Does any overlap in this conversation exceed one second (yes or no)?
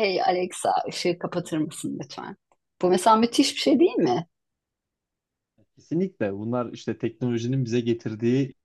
no